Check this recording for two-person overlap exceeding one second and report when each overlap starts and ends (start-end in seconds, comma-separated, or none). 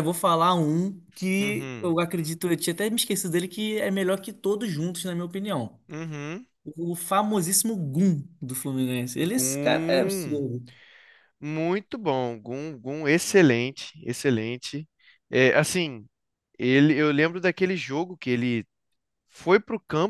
9.2-10.4